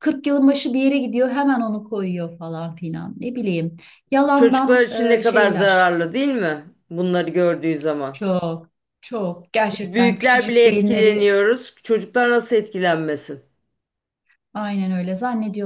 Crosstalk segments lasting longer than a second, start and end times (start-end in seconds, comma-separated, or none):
4.3-5.9, 9.7-11.3